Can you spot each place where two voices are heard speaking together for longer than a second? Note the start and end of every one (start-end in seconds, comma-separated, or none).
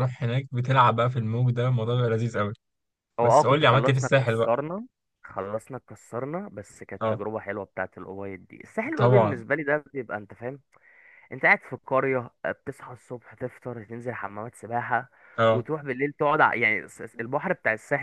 3.2-4.5